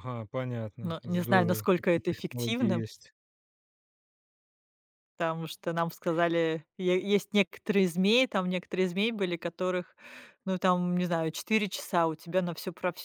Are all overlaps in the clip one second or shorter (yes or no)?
no